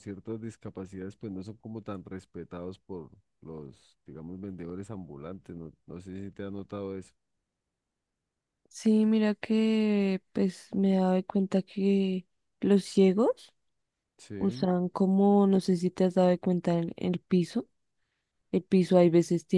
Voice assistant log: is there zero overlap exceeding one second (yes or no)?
yes